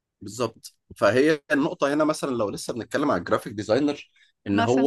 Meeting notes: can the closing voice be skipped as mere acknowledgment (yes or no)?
yes